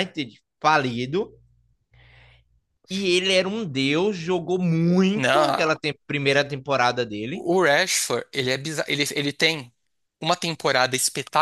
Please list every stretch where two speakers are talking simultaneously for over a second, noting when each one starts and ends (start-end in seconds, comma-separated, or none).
none